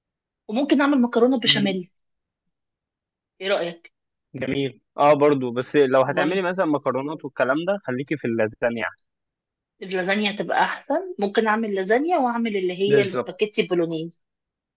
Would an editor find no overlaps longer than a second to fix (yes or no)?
yes